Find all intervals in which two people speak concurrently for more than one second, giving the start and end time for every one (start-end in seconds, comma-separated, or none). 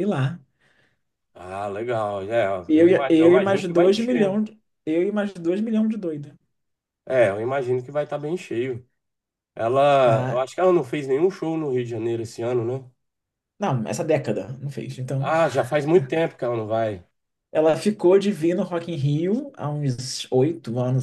2.7-4.4